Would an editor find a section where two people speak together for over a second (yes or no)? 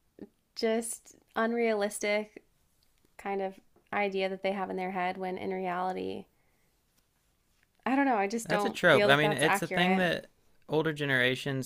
yes